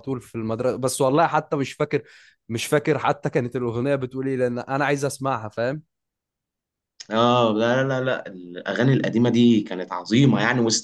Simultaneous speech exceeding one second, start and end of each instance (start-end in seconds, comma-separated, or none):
none